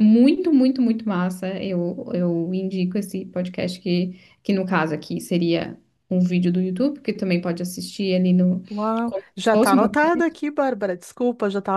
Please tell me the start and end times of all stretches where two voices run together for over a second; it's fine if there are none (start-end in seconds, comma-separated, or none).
9.1-10.4